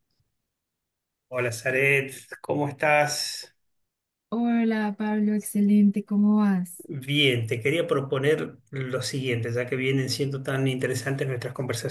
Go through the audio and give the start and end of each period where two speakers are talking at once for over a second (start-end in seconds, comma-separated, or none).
none